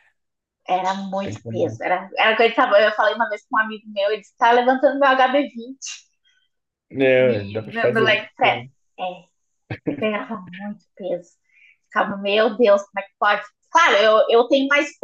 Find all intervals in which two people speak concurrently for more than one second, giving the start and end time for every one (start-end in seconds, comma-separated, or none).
7.2-8.6